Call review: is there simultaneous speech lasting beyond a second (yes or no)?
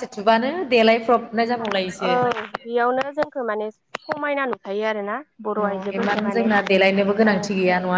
yes